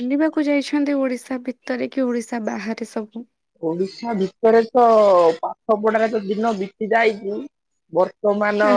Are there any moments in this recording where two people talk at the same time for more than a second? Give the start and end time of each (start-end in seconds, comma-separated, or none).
none